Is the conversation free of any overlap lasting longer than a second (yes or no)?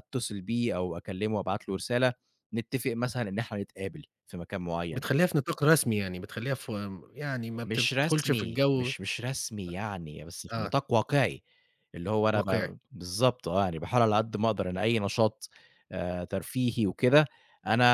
no